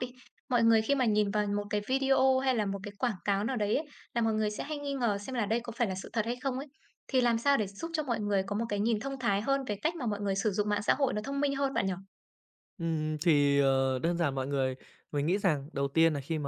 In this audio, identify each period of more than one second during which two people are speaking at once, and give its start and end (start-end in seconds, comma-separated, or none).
none